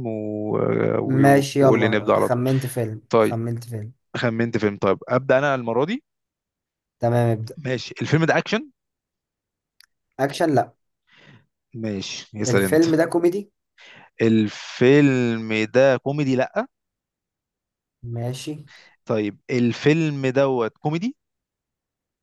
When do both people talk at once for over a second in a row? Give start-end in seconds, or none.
1.0-2.4